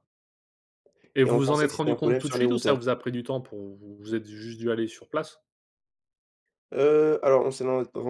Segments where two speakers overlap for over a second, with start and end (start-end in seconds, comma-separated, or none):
1.2-2.8